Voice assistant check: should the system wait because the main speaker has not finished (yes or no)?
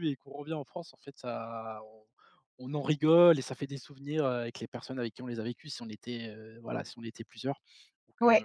no